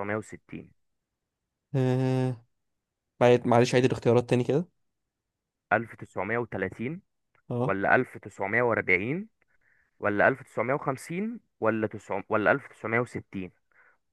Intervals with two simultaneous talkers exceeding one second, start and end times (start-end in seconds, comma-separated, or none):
none